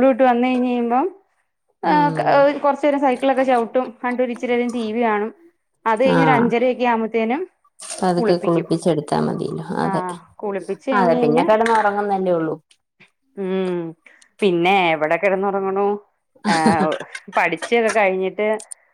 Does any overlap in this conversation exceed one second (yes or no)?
no